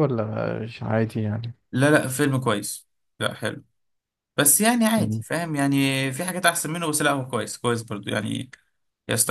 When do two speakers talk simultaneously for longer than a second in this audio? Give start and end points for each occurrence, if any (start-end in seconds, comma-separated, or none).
none